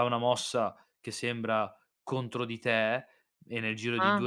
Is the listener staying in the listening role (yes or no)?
yes